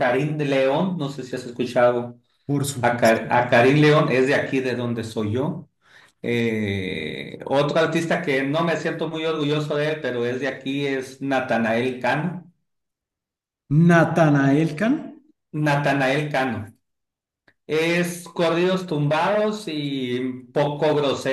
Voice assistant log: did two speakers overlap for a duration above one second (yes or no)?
no